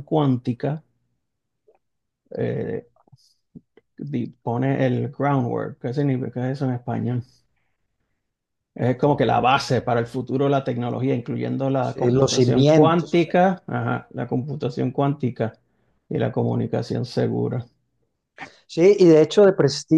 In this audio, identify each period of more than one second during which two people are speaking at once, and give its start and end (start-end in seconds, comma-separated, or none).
11.8-13.3